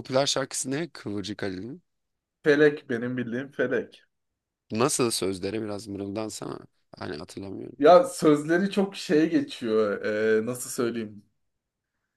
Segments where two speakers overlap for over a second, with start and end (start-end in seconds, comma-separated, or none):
none